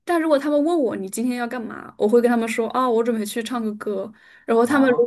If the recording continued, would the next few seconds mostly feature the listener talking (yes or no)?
no